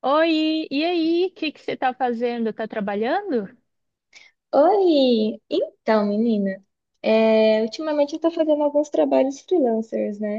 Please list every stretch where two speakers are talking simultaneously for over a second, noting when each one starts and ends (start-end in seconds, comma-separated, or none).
none